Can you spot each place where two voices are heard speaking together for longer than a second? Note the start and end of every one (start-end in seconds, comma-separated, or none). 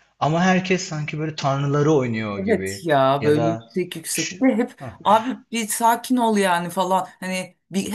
2.3-3.8